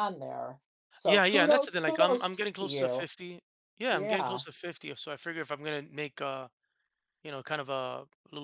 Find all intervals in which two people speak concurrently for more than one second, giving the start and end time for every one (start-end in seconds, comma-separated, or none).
1.0-3.1